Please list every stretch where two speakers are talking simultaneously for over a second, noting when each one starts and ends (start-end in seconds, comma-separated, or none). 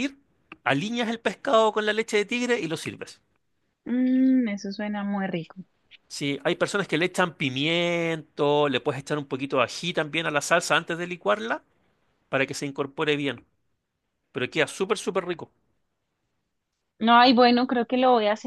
none